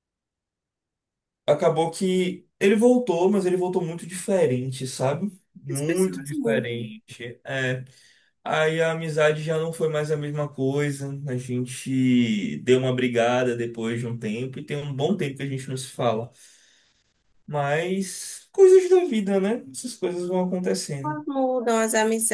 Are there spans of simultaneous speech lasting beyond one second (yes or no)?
yes